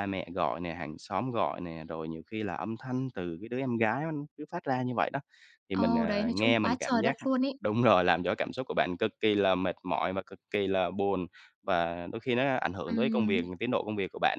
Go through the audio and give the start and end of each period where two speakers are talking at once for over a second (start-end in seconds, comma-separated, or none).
5.7-7.2